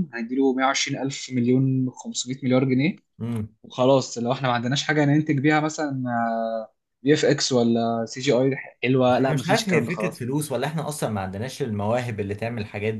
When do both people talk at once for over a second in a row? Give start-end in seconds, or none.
9.1-10.3